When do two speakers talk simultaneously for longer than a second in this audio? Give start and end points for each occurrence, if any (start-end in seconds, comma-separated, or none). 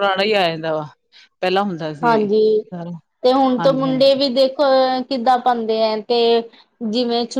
none